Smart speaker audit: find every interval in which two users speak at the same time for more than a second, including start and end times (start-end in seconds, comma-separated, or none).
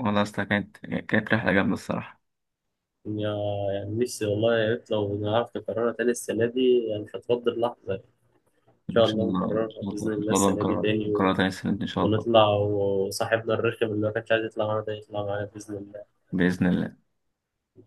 8.9-11.3